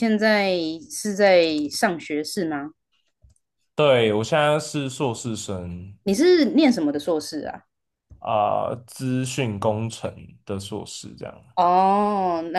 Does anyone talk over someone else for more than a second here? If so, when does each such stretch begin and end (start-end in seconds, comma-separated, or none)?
none